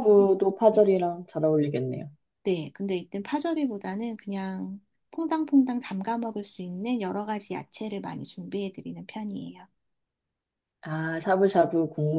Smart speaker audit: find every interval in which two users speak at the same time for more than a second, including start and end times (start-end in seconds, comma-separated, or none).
none